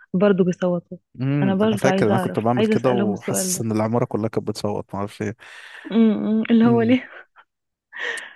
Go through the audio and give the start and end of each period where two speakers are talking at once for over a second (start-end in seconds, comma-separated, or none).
1.4-3.7